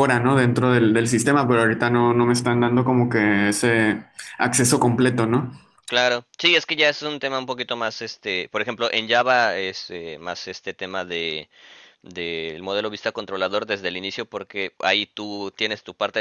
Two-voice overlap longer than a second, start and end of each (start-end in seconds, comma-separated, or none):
none